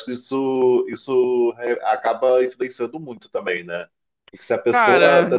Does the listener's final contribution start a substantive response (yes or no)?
no